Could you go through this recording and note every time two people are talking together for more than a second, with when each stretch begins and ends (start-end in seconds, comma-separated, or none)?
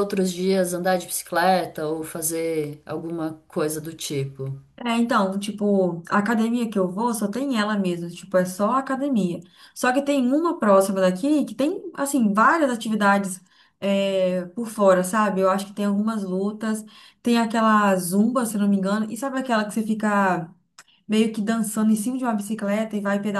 none